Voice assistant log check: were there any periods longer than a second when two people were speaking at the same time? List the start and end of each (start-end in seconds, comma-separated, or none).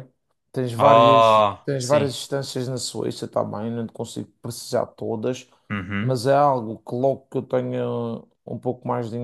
0.8-2.1